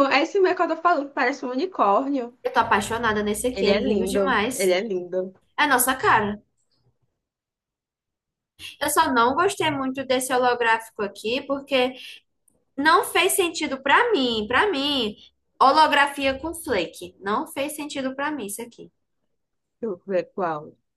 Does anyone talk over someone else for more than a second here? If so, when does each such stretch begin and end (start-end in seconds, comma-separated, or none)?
3.5-4.8